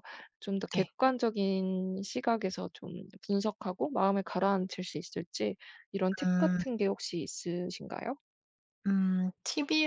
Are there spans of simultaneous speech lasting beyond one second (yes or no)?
no